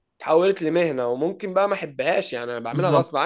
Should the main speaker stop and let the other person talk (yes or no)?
yes